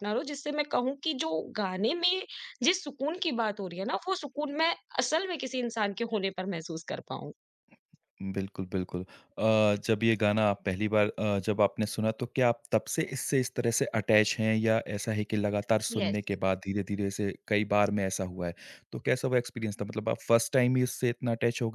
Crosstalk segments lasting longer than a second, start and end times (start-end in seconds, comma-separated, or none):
none